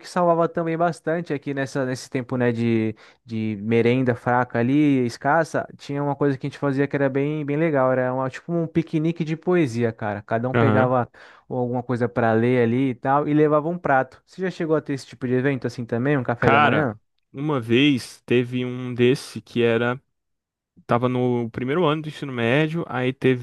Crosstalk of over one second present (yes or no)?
no